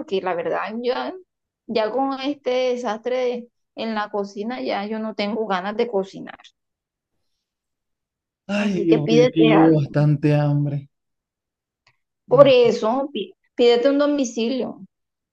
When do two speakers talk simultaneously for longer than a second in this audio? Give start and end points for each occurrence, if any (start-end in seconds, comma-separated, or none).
8.6-9.9